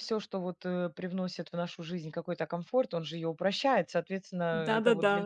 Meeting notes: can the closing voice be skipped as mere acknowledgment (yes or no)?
no